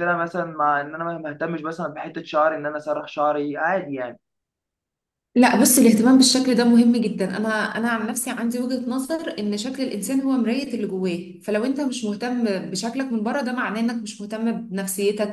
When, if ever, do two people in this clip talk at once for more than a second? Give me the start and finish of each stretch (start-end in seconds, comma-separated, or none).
none